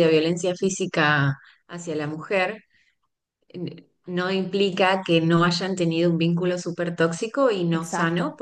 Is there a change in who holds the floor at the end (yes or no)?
no